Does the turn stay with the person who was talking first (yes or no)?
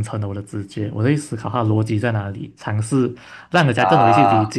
yes